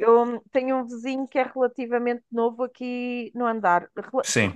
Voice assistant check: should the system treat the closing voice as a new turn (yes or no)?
no